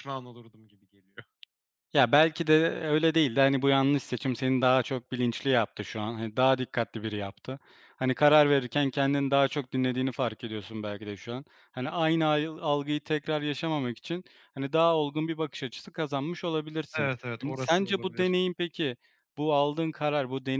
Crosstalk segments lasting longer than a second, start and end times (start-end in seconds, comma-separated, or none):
16.9-18.4